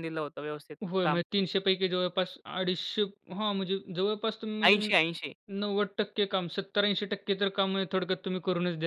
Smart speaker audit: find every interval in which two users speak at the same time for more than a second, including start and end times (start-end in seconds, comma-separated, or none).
none